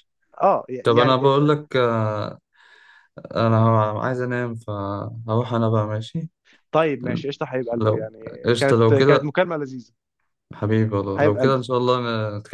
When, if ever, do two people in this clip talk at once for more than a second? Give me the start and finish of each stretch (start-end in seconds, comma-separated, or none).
7.8-9.3